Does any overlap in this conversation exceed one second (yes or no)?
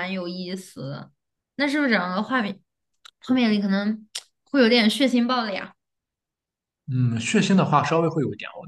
no